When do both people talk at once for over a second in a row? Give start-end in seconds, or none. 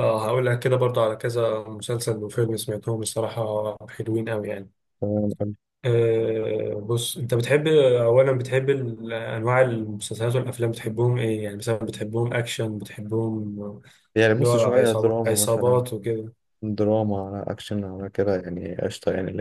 14.4-15.8